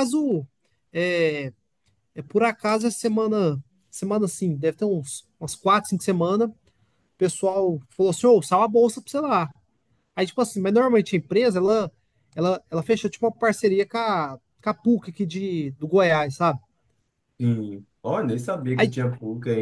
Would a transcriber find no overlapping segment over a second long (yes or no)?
yes